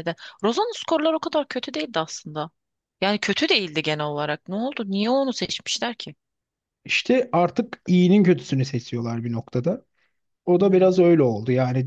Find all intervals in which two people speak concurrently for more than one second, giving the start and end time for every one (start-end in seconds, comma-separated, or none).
none